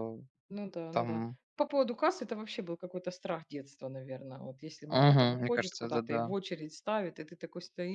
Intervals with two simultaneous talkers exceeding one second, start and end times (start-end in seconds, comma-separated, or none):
4.9-6.3